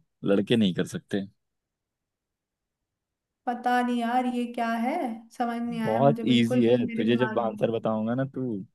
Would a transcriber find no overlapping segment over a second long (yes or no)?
no